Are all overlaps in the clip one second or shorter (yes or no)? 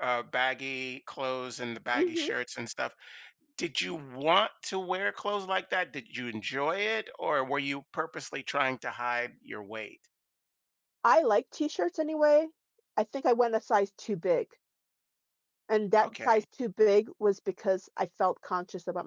yes